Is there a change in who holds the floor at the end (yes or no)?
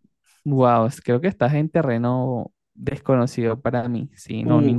yes